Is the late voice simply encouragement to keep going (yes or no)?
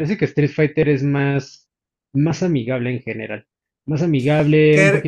no